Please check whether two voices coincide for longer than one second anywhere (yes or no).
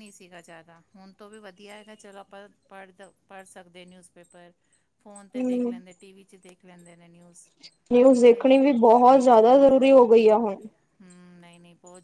no